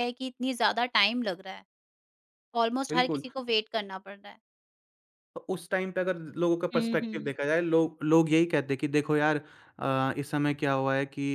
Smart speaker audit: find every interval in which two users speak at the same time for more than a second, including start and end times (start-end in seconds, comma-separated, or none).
none